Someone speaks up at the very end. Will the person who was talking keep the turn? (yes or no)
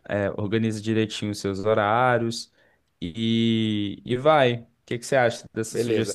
no